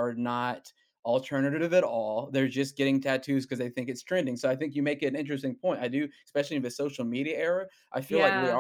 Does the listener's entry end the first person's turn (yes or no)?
no